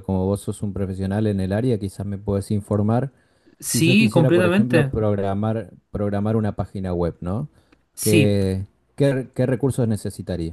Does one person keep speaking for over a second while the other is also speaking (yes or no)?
yes